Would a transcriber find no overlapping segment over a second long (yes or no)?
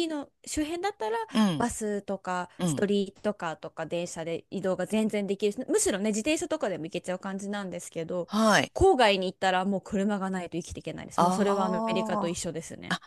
no